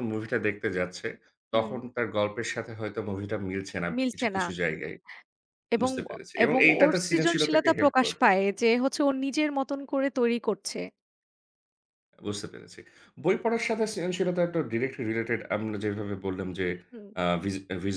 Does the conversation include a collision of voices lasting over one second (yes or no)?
yes